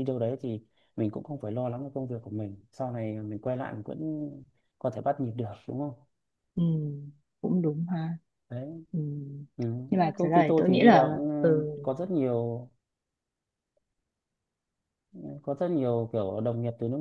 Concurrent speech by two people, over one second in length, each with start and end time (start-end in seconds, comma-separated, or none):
9.9-11.7